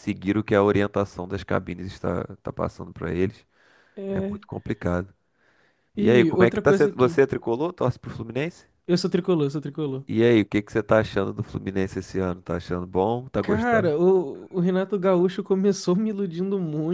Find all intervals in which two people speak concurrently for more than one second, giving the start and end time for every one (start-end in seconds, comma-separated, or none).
6.0-7.2